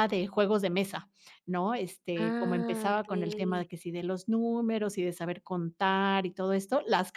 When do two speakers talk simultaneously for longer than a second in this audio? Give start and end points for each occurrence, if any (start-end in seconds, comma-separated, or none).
2.1-3.7